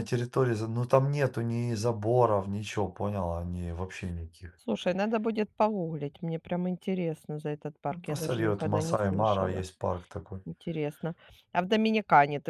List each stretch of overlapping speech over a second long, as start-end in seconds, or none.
7.9-9.6